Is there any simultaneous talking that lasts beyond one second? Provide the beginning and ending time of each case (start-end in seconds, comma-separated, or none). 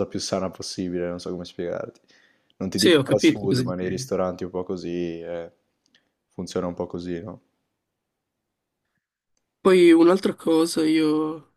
2.7-4.1